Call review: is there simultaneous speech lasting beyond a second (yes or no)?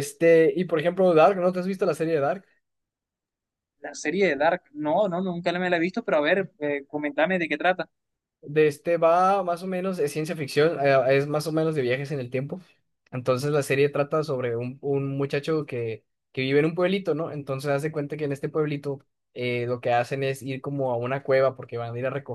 no